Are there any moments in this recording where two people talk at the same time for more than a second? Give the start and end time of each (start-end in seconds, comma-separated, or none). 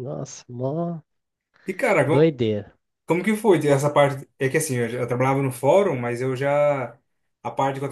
none